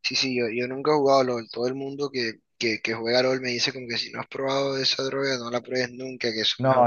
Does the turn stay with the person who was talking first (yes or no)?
no